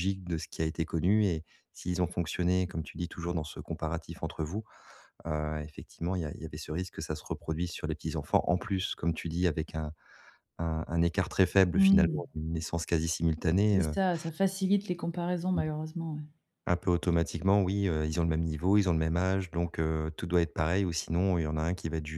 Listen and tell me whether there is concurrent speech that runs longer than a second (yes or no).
no